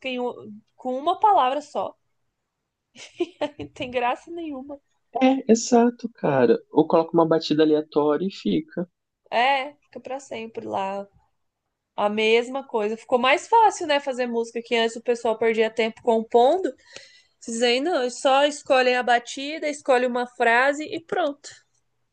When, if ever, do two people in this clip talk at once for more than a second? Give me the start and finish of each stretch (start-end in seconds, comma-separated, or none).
none